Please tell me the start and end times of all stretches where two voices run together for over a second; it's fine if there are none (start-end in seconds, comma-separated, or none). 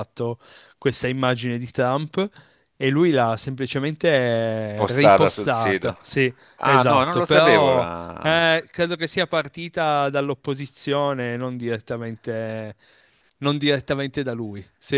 4.7-5.9, 6.6-8.4